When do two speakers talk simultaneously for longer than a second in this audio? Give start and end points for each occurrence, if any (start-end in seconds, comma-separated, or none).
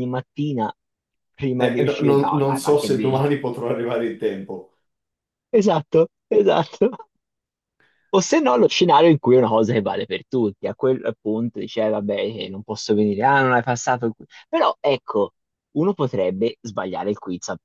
1.6-3.2